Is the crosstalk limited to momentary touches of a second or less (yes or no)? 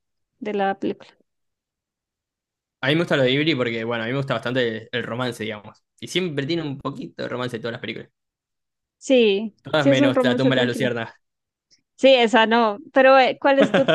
no